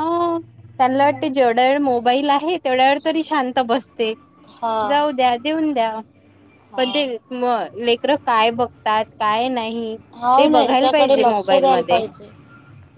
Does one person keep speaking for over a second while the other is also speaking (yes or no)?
yes